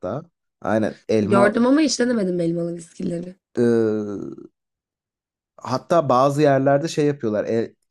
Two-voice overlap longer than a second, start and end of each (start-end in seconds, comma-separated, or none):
none